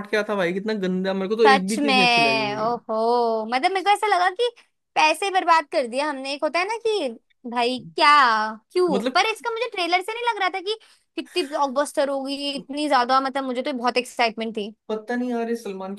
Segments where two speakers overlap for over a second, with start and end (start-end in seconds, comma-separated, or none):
1.5-2.7